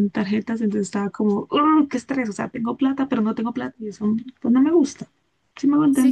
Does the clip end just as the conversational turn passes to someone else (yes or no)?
yes